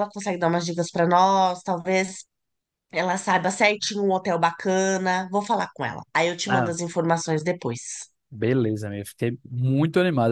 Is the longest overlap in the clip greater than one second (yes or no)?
no